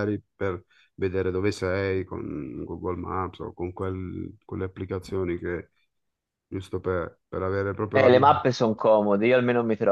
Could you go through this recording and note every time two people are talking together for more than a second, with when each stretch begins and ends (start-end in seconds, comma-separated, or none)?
none